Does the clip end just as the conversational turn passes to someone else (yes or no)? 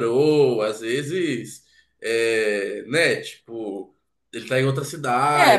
yes